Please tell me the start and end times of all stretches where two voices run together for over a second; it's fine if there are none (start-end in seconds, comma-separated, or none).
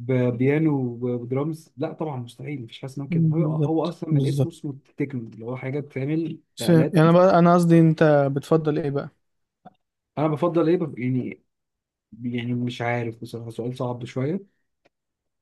3.1-4.5